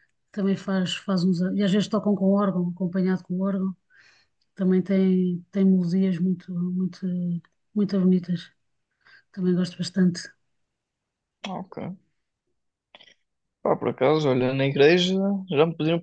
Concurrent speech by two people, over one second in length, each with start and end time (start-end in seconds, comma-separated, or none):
none